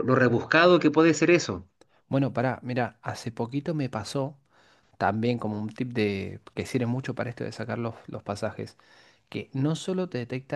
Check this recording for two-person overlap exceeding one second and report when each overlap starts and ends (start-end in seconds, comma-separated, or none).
none